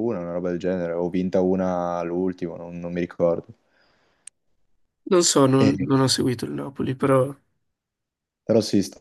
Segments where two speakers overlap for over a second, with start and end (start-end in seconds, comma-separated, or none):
none